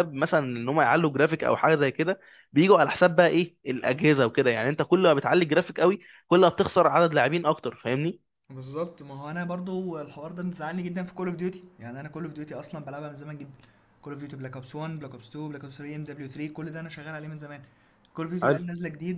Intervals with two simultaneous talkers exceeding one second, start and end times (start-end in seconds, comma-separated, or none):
none